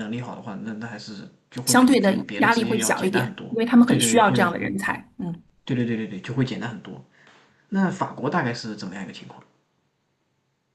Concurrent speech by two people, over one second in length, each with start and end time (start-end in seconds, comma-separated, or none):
1.6-4.5